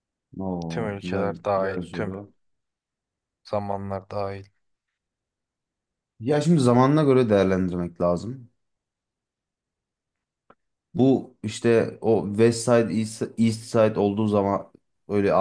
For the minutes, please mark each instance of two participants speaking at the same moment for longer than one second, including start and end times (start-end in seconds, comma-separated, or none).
0.7-2.1